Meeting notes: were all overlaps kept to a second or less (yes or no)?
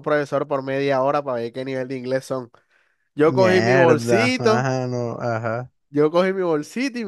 no